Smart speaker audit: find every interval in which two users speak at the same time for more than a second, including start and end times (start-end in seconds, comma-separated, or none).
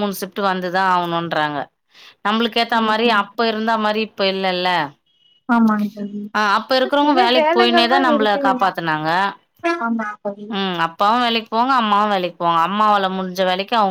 7.0-9.1